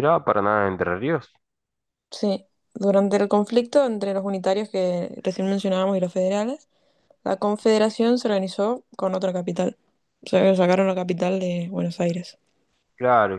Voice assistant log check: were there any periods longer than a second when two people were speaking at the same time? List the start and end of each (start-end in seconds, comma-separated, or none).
none